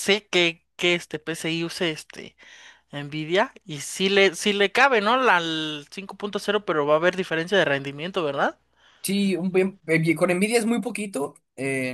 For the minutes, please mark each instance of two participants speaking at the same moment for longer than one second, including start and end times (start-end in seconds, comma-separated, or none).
none